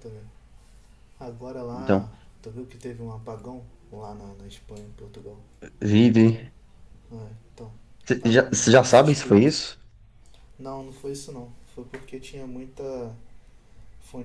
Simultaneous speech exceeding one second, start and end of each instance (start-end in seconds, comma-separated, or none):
8.2-9.5